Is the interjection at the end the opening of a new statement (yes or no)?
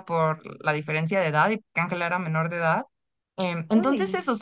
no